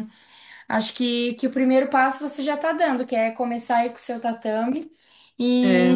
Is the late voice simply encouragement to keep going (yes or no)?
yes